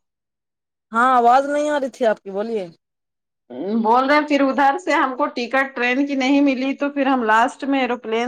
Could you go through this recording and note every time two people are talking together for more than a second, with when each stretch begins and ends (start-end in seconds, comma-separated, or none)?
none